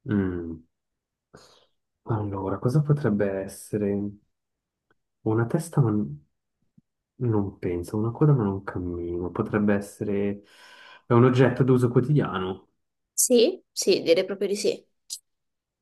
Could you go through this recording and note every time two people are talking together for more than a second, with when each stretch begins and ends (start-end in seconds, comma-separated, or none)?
none